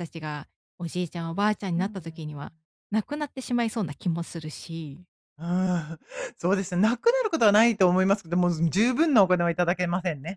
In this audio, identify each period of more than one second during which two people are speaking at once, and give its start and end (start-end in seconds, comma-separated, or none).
1.1-2.5